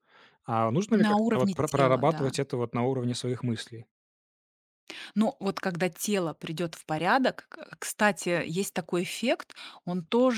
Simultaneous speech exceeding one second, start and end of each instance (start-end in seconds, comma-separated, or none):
0.9-2.3